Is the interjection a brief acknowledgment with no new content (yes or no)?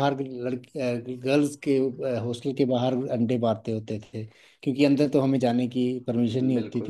no